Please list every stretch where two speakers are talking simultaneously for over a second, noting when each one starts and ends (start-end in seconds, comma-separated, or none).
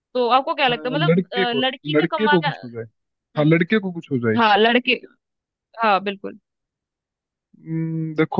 0.7-2.5